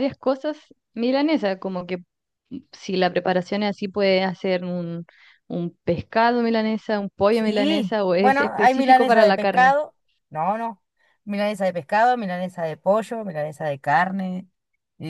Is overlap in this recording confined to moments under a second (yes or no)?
no